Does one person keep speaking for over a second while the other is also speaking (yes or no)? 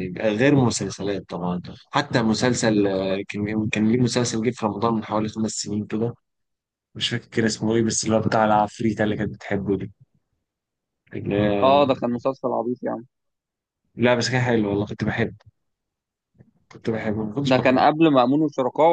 no